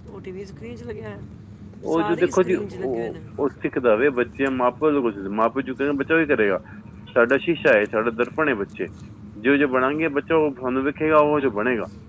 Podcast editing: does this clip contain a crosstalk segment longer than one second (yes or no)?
yes